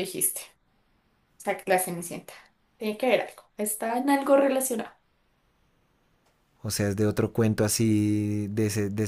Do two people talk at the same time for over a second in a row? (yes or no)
no